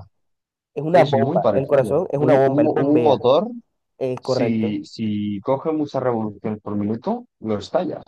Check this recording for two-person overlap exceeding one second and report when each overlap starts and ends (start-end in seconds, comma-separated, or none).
0.9-3.2